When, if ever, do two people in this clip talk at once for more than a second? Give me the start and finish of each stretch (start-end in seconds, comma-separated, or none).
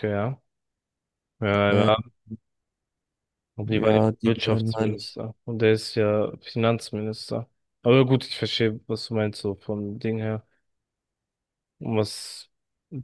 3.6-5.2